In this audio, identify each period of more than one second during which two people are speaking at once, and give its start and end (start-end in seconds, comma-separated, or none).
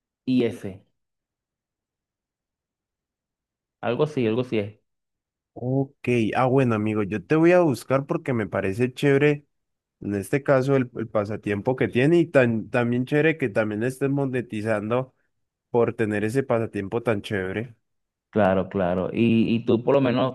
none